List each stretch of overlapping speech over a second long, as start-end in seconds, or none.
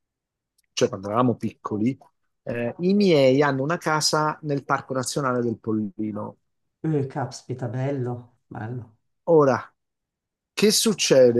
none